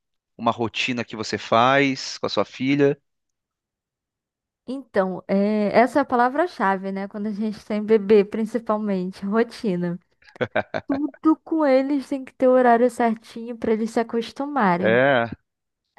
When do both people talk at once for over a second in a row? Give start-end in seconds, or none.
none